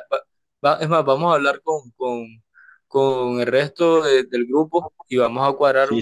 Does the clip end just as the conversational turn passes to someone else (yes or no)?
yes